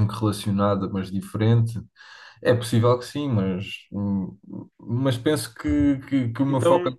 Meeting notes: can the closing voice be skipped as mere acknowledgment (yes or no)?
yes